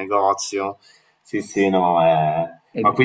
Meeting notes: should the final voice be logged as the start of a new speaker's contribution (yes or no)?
no